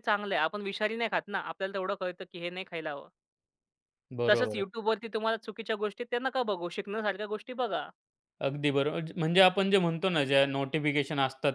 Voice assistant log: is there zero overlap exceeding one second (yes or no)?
yes